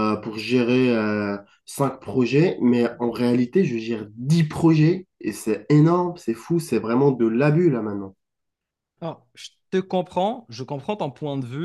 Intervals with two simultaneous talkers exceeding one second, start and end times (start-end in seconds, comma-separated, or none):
none